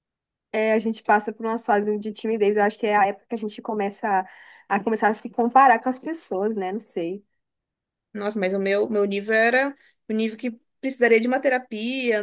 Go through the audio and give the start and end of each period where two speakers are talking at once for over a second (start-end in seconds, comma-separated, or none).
none